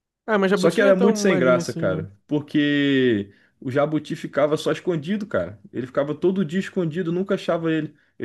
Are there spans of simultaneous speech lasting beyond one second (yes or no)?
yes